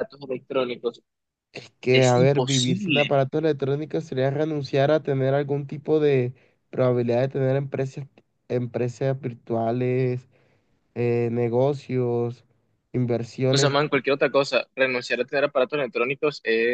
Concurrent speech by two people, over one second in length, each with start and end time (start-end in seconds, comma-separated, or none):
1.9-3.2